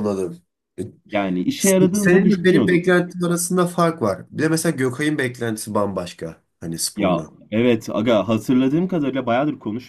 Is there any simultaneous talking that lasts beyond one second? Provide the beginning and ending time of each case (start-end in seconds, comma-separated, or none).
1.6-3.0